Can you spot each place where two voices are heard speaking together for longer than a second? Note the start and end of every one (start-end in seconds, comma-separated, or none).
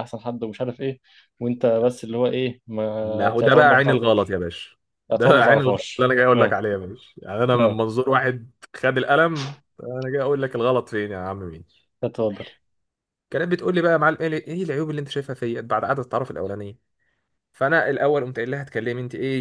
3.0-4.4, 5.1-6.6